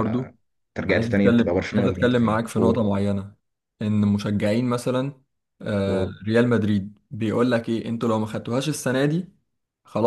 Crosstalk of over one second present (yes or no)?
yes